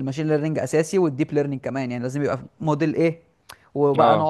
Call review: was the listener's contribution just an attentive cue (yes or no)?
yes